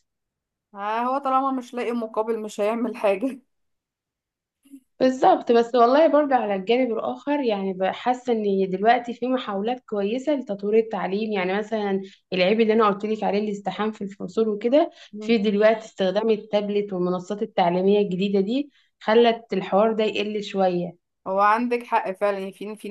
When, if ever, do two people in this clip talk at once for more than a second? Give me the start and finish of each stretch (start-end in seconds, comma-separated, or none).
none